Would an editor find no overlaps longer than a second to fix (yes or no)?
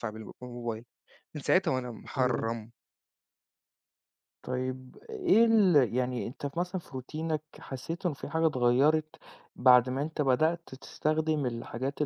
yes